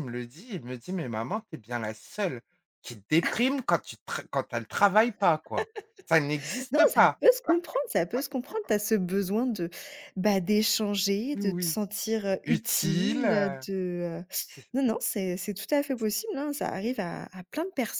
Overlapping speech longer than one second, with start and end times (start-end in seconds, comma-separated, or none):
12.4-13.7